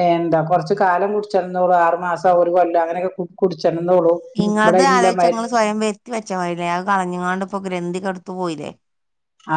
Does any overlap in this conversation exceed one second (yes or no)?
no